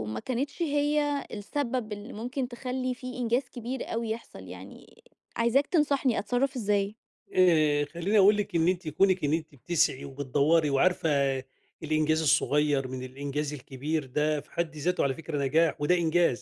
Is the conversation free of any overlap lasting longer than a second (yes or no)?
yes